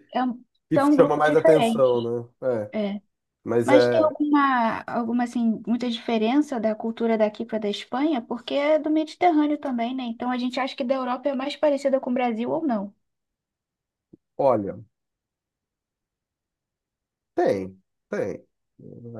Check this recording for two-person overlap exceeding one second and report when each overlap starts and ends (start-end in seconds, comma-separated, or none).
0.7-2.1